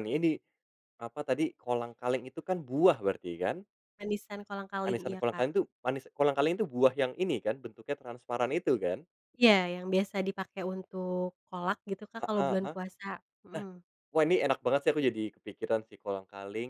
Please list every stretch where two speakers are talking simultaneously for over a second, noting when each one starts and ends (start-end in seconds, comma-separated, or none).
none